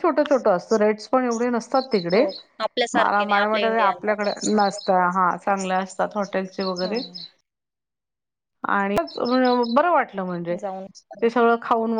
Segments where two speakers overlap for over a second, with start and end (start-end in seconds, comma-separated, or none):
3.0-4.5